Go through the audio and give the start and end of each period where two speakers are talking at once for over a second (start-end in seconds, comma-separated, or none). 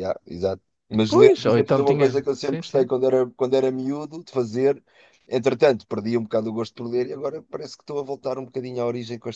1.1-2.9